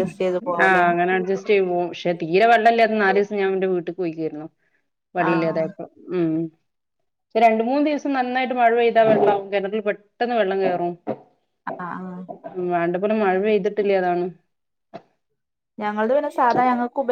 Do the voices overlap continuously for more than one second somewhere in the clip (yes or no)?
no